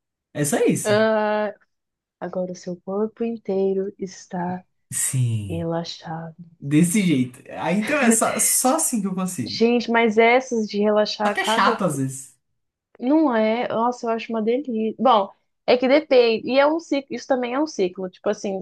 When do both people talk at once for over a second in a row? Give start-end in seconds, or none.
none